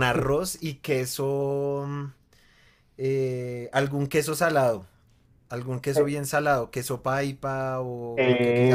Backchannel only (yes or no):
yes